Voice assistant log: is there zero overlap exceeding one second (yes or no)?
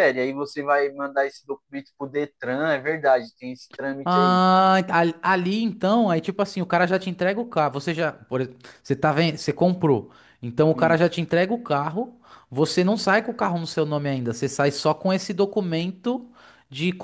yes